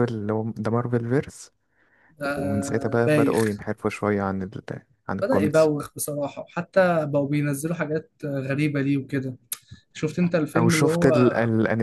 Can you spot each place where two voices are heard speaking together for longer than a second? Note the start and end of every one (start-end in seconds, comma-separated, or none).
2.4-3.6